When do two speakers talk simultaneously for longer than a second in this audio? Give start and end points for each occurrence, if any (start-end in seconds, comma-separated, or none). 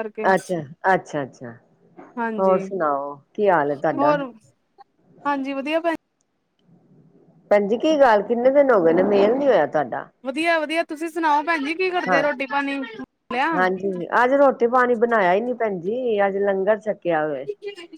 none